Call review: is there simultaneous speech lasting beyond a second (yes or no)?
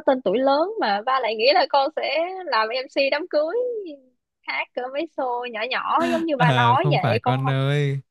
yes